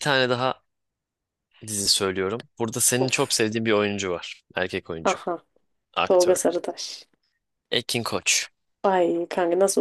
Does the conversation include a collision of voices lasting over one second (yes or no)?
no